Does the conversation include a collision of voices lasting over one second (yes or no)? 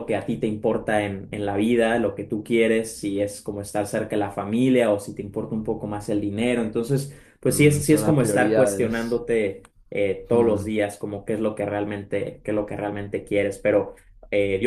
yes